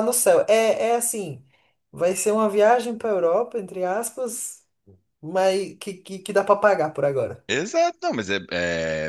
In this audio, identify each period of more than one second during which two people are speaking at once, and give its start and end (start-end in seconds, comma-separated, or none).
none